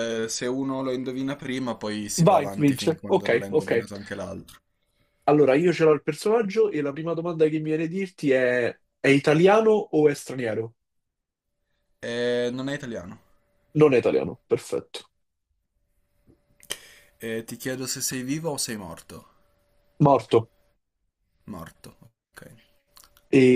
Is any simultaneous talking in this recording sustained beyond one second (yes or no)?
yes